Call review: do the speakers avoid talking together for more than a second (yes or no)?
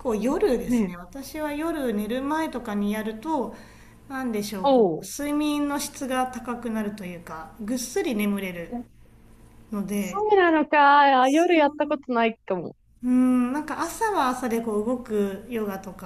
yes